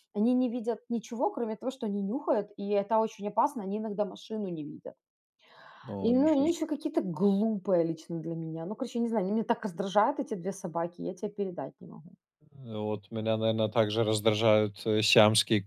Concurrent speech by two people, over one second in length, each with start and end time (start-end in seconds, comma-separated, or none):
none